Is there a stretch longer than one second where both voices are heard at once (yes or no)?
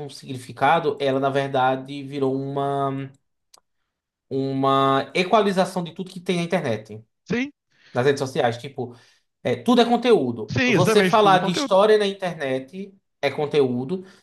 yes